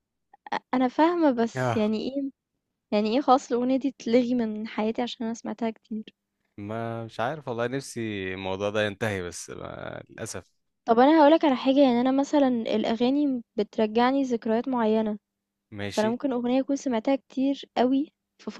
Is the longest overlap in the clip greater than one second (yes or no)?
no